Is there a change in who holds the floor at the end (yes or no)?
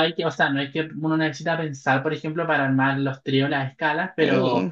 no